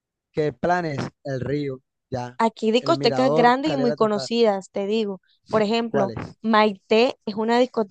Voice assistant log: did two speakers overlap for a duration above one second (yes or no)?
yes